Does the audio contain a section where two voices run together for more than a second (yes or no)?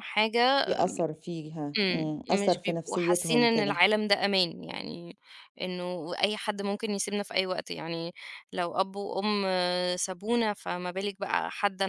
yes